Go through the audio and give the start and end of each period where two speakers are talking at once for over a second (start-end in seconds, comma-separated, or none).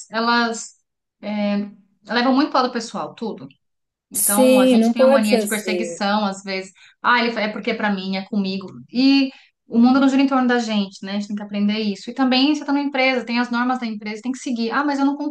4.1-6.0